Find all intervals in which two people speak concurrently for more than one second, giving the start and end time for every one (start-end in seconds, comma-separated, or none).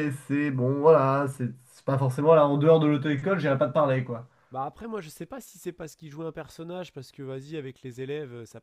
none